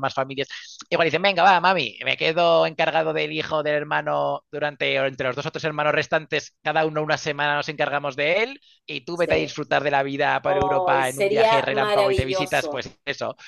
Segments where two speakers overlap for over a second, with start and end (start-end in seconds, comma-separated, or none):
10.4-12.8